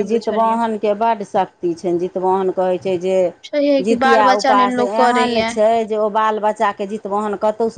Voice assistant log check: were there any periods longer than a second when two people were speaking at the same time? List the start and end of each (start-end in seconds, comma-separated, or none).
3.8-5.5